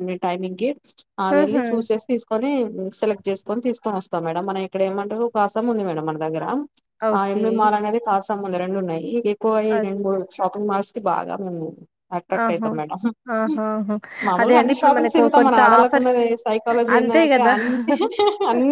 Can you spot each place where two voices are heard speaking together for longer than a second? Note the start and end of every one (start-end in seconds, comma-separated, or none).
14.4-16.2